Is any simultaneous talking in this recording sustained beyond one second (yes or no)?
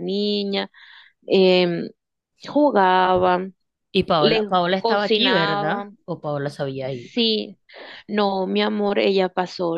yes